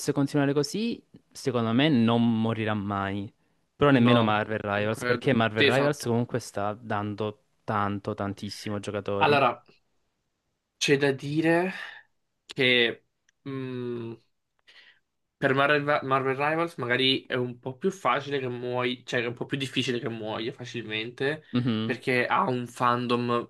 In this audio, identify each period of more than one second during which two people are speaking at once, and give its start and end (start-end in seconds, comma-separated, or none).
3.9-6.1